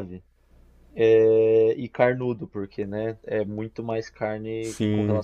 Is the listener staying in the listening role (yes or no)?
yes